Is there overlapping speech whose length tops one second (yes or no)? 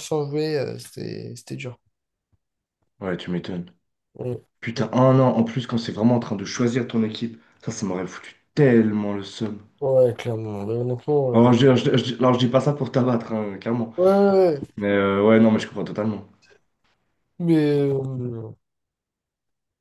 no